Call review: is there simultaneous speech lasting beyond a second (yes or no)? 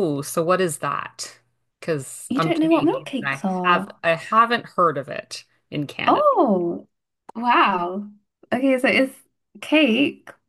yes